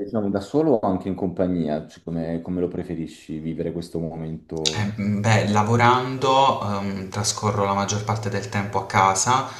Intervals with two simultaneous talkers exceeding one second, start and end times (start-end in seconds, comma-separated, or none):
none